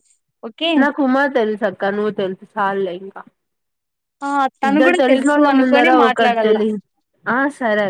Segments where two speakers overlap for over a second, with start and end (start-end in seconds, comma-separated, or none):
4.7-6.6